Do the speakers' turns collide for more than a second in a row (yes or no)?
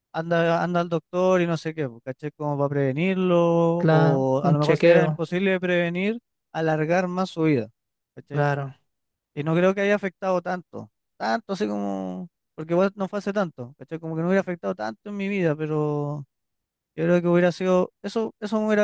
yes